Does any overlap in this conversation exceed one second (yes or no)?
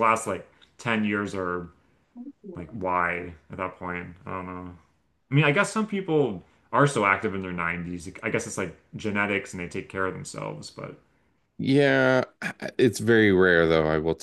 no